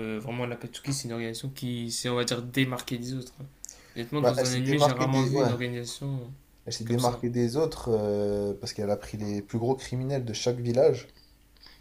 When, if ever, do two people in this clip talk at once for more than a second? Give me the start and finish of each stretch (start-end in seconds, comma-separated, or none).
4.2-5.5